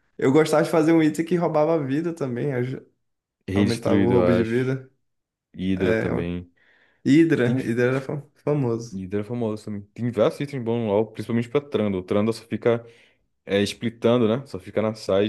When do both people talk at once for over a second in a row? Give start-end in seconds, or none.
3.5-4.8